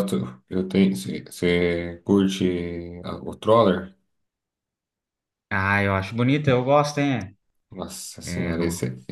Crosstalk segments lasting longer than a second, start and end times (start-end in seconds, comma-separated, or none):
none